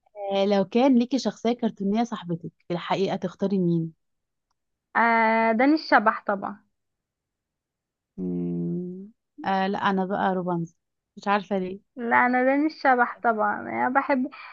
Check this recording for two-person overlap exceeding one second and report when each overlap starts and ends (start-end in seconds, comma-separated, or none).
none